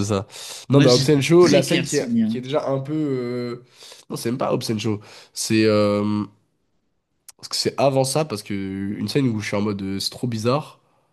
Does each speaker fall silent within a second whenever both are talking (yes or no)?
no